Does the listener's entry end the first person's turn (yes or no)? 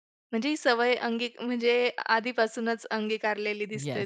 yes